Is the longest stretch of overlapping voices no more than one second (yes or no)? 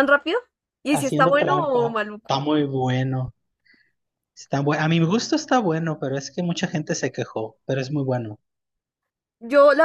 no